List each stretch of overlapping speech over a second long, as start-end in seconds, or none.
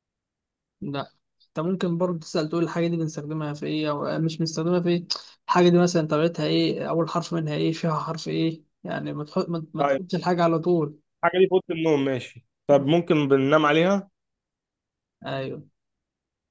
none